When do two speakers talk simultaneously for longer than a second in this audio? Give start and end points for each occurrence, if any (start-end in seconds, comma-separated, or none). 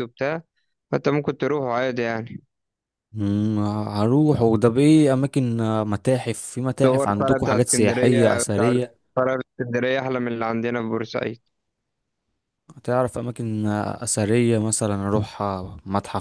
6.8-8.7